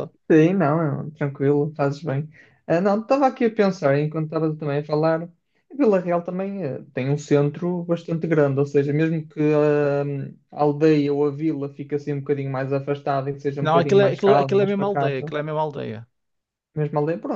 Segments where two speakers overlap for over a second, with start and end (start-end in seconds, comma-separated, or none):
13.6-15.3